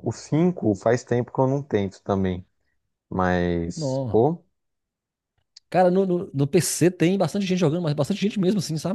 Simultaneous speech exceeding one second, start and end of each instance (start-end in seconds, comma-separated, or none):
none